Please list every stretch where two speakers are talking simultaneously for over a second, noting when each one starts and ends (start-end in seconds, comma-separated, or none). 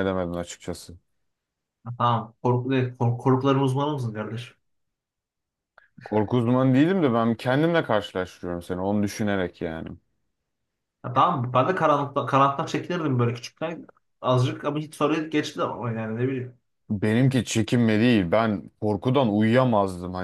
none